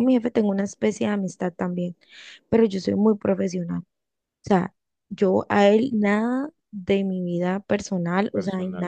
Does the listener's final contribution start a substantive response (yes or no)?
yes